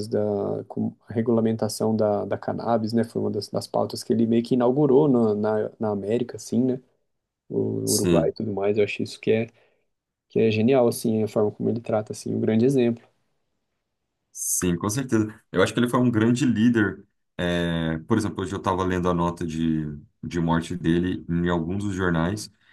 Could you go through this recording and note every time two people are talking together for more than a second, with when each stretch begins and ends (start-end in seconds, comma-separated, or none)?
none